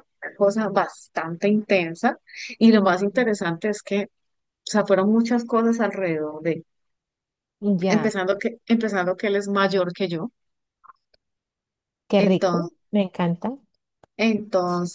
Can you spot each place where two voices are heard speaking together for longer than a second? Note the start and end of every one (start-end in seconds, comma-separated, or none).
none